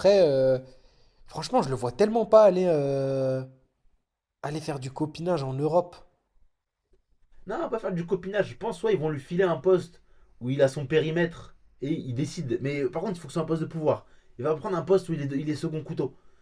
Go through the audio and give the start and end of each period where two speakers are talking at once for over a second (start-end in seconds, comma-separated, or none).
none